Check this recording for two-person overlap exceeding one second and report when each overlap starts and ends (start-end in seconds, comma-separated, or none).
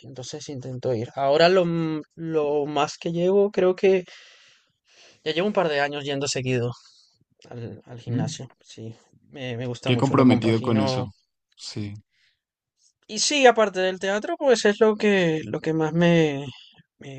9.8-11.1